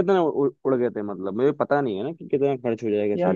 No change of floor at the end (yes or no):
no